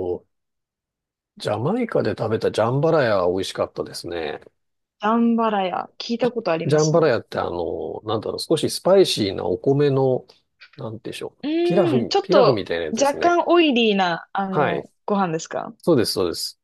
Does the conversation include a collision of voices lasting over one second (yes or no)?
yes